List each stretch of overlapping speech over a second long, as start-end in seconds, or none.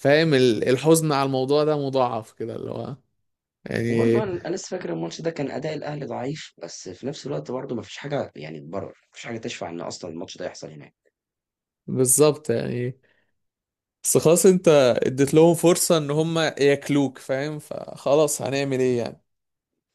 none